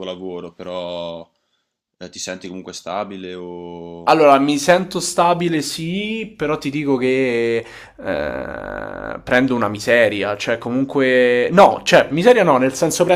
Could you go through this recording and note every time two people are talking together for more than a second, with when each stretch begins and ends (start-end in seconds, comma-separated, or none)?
none